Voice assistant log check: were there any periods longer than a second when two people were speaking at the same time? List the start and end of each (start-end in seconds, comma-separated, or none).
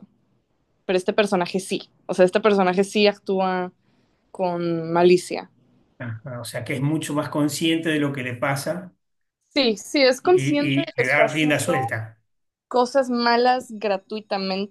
10.2-11.9